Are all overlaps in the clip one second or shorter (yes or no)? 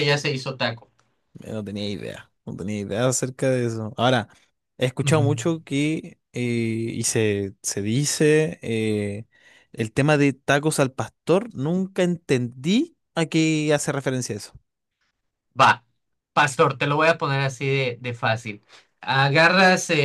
yes